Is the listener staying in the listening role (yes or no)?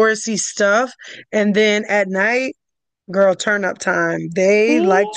yes